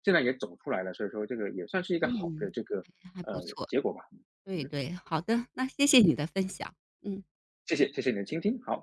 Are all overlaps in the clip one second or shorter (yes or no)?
yes